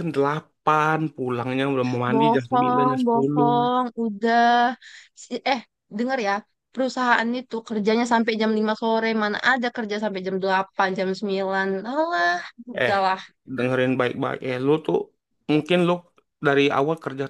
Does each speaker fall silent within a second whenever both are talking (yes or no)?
no